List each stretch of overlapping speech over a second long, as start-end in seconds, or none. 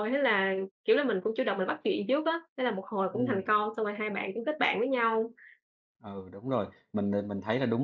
none